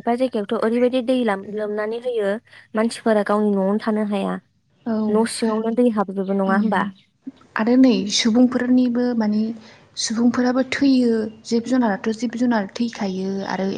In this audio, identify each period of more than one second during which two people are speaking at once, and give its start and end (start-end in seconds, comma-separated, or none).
none